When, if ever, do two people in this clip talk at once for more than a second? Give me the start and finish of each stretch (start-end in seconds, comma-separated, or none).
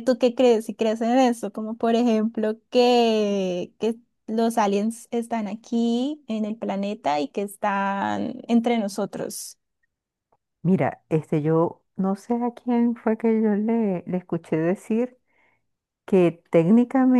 none